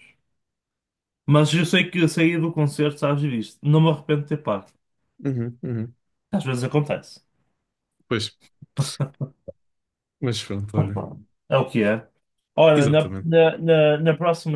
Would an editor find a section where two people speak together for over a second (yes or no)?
no